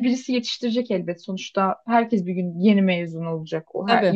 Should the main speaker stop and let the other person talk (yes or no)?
no